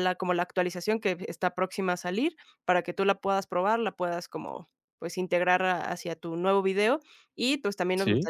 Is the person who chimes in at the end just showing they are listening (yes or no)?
yes